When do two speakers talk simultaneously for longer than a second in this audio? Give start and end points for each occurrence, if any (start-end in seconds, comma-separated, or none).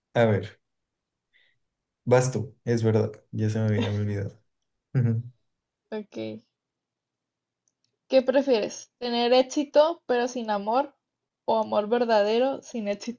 none